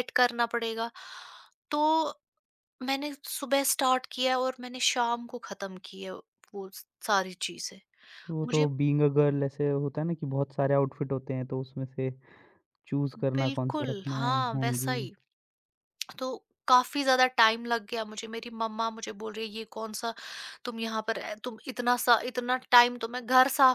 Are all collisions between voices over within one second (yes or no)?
no